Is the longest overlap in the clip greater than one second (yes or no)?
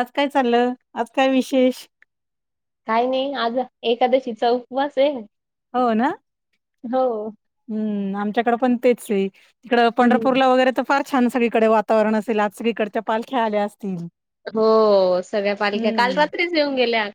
no